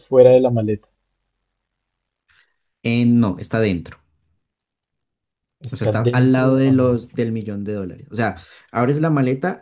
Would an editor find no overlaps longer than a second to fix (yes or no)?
no